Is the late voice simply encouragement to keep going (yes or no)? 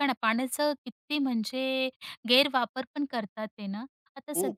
yes